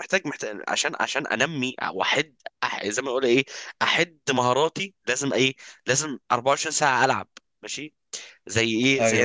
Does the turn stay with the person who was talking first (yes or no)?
yes